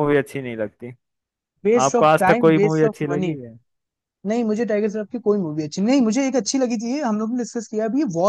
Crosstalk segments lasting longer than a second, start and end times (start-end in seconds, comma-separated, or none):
1.9-3.3